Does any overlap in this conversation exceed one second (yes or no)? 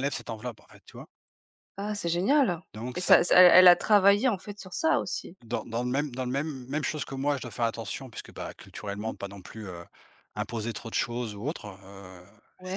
no